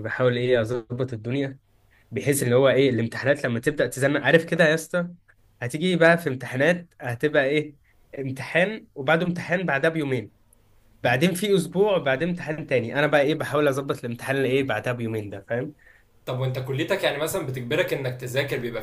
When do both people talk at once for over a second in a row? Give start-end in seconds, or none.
none